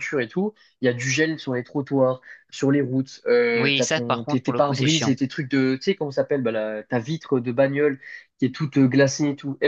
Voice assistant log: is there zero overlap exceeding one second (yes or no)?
no